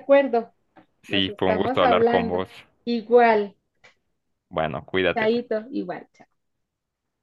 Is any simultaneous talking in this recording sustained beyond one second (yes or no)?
yes